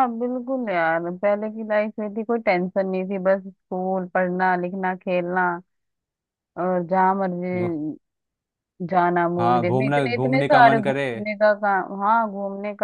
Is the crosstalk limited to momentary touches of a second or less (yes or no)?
no